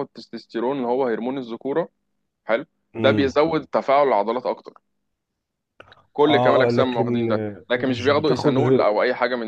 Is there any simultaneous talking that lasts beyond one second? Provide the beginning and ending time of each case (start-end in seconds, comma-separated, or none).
6.2-8.6